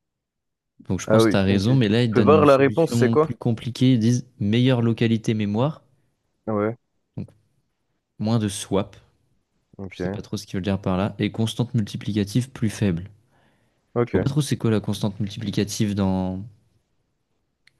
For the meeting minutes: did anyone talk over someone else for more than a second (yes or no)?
yes